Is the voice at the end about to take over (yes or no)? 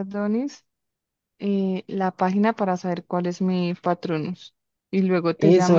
yes